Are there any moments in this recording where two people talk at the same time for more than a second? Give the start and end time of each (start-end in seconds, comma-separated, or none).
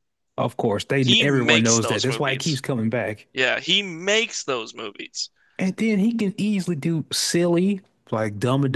1.0-2.6